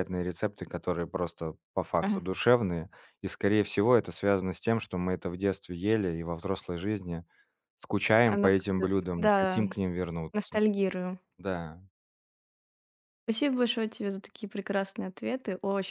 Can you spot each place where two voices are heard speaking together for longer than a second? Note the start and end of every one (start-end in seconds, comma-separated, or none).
8.2-9.6